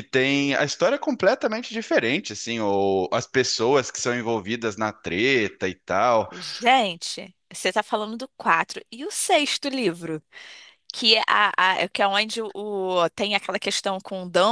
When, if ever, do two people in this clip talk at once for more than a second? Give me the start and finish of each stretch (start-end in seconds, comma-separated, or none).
none